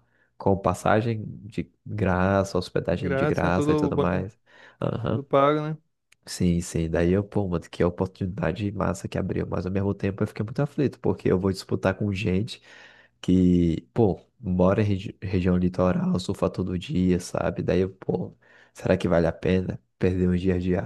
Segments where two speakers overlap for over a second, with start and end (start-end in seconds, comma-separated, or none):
2.9-4.2